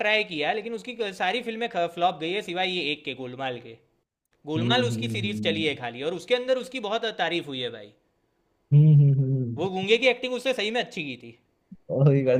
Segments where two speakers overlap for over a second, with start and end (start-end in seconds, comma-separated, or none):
4.6-5.9